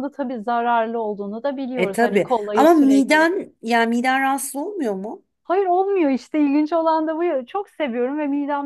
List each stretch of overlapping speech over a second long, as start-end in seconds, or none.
1.8-3.3